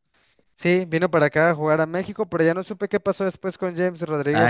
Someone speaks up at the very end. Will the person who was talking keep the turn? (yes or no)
no